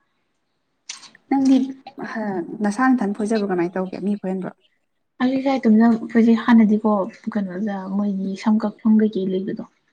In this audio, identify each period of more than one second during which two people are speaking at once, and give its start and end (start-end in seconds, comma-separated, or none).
none